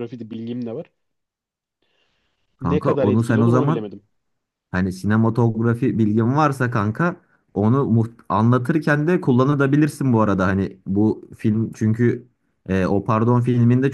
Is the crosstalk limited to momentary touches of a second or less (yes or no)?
no